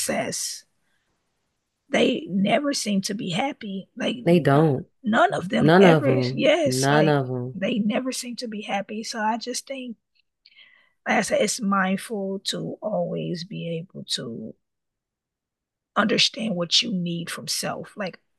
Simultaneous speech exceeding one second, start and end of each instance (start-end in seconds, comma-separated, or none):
5.6-7.6